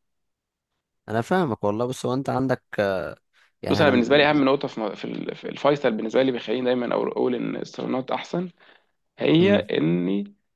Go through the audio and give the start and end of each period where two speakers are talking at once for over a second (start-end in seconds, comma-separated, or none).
none